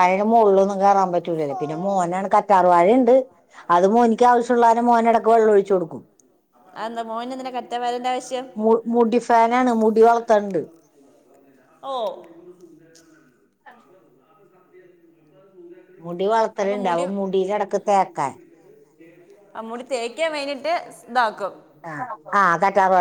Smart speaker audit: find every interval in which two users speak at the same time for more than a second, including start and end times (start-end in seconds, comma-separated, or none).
none